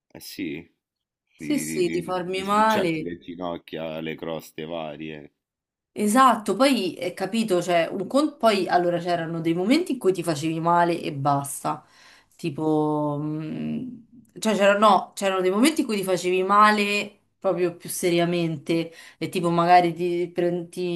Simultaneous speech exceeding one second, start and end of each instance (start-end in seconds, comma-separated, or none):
1.4-3.1